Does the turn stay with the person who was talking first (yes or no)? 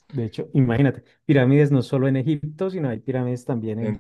no